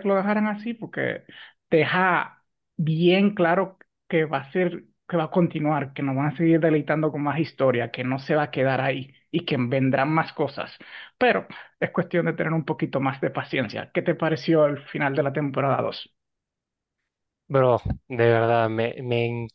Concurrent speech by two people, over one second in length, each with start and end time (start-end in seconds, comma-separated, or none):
none